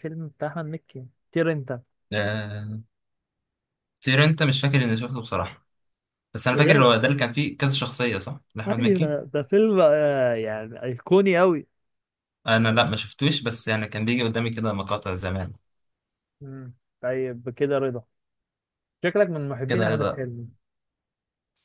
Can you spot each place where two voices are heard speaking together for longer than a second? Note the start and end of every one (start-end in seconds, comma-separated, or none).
none